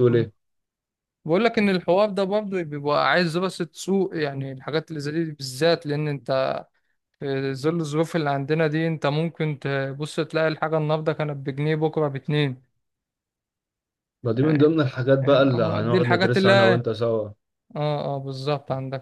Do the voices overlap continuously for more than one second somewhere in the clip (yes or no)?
yes